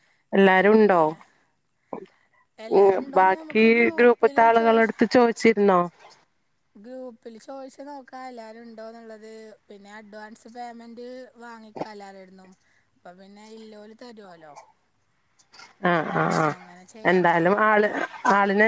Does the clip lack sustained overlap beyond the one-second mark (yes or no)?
no